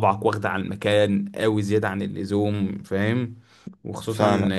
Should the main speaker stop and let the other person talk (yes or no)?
no